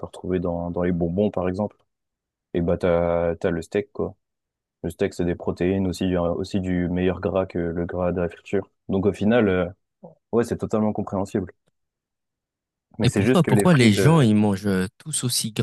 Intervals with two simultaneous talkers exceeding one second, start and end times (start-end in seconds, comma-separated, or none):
13.0-14.3